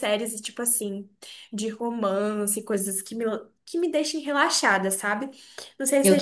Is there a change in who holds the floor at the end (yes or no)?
no